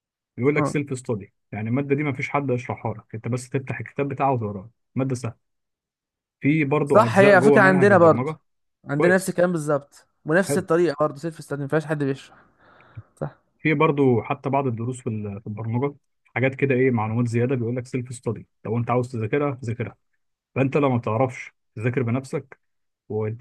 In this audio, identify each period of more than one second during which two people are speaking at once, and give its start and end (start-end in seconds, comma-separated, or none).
6.8-8.3